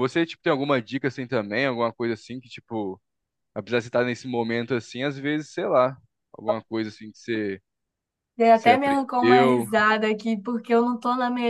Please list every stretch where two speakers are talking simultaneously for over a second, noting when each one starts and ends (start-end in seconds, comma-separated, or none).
8.5-9.7